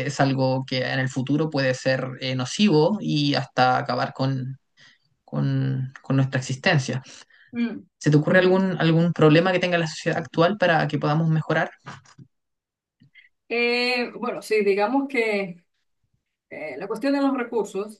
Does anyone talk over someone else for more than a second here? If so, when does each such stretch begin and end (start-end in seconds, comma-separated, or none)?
none